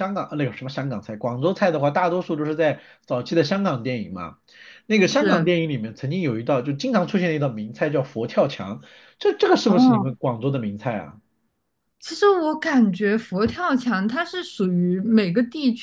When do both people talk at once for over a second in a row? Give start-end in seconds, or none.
none